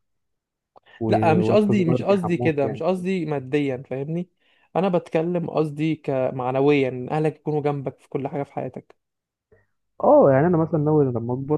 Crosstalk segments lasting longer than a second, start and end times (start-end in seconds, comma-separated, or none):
1.4-3.0